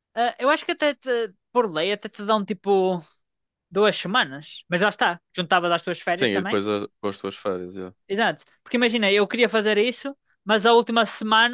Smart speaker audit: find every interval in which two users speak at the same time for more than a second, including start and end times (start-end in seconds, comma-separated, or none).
none